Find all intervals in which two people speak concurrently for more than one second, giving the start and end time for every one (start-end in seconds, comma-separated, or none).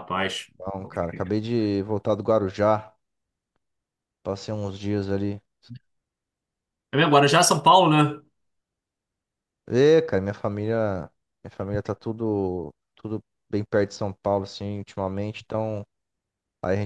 none